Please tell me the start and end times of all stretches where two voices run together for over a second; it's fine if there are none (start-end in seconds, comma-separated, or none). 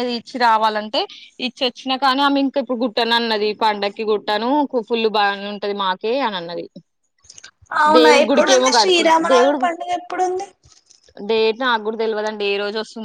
8.0-9.6